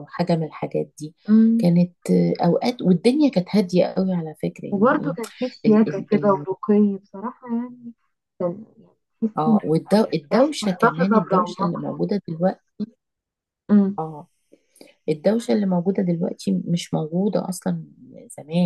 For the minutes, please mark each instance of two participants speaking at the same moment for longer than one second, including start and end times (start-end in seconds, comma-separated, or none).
10.3-11.8